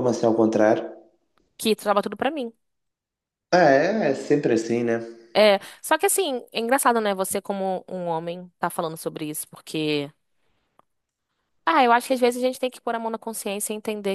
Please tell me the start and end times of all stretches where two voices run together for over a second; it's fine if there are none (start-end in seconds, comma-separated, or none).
none